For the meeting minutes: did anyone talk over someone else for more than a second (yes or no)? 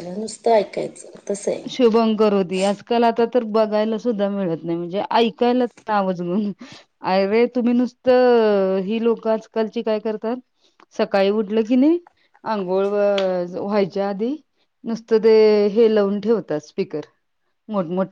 no